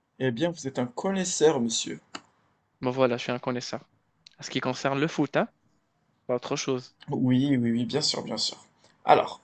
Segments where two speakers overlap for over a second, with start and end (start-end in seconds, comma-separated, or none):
none